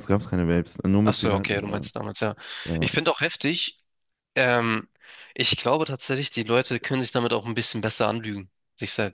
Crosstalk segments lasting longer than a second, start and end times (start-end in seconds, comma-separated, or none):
none